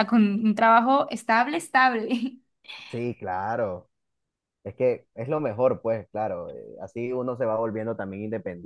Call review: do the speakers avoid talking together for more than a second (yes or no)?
yes